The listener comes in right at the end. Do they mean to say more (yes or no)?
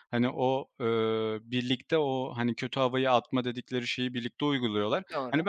no